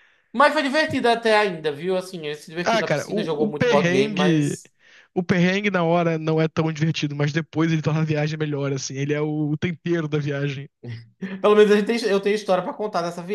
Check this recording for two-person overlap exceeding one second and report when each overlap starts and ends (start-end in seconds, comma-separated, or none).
2.6-4.6